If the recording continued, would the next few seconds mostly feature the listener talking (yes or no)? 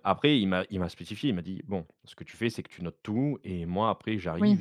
no